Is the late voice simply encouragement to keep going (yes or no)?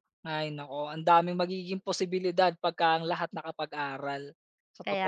no